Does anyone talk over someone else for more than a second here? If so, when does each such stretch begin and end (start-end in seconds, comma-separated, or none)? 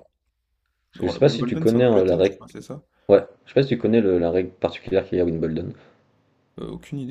1.0-2.4